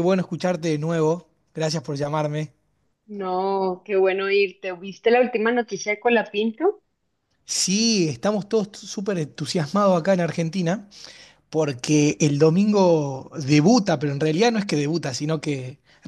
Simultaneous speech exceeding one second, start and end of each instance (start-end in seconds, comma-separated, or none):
none